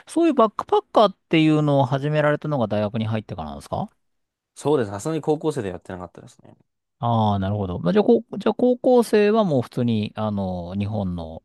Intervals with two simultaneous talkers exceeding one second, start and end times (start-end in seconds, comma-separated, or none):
none